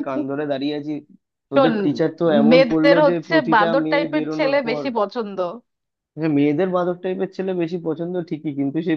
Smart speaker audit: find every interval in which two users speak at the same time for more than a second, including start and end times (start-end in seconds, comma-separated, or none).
2.5-4.8